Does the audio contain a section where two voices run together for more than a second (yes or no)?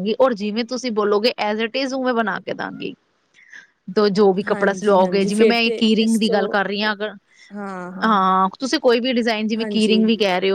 yes